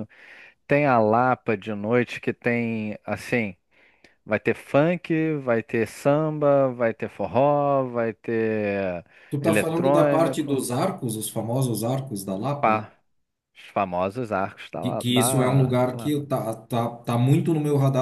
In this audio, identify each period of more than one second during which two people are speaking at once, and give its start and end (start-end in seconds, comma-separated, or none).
9.4-10.6, 14.8-16.2